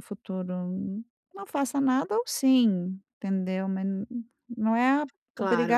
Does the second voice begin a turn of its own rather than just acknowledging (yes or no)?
yes